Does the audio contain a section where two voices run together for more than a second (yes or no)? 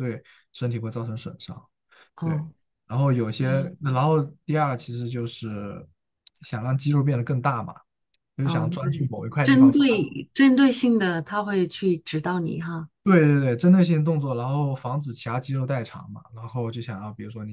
yes